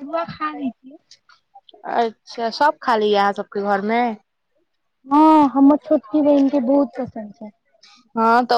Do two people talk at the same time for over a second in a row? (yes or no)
no